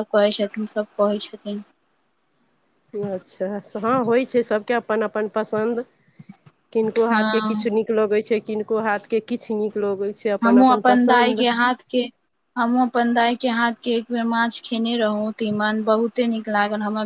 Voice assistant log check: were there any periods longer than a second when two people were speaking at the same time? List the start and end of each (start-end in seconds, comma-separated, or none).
none